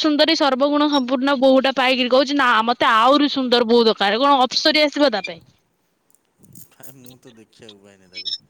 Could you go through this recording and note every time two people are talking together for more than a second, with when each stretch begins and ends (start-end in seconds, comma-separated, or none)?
none